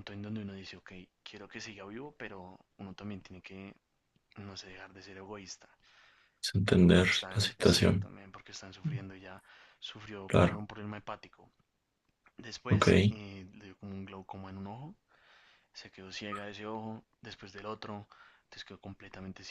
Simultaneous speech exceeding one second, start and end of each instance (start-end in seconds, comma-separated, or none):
6.7-8.1